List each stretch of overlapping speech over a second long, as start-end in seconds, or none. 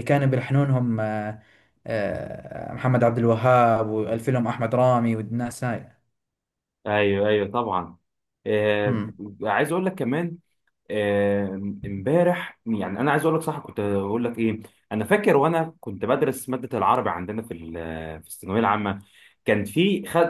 none